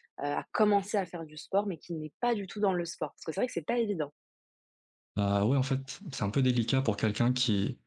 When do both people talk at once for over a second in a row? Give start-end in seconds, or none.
none